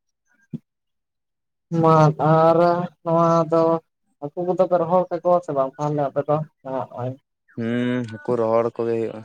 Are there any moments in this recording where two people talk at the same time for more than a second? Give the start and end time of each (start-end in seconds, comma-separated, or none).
none